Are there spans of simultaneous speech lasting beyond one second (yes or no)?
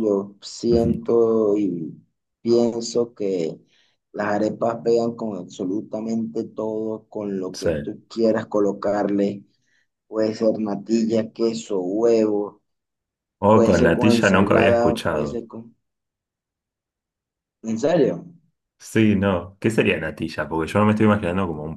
yes